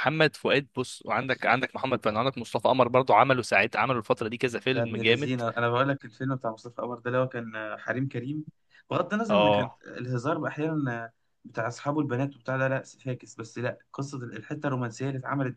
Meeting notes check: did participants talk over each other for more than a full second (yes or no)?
no